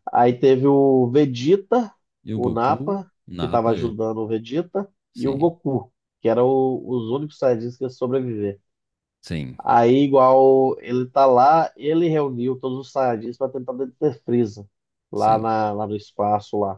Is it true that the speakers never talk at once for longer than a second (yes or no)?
no